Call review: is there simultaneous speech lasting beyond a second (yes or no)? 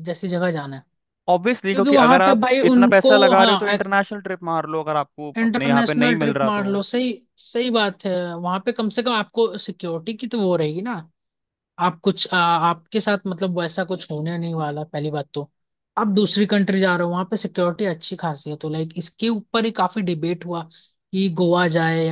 yes